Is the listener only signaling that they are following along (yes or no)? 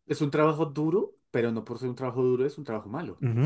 no